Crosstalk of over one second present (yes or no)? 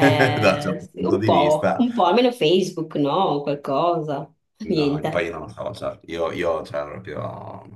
yes